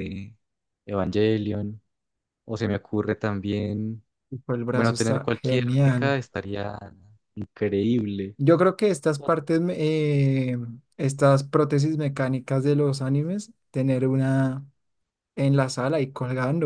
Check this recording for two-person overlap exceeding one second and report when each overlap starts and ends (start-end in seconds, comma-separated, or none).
4.7-6.2